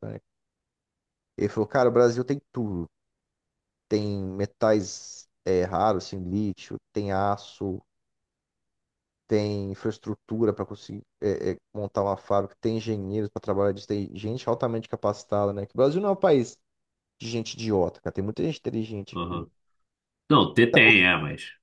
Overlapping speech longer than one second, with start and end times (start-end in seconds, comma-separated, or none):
none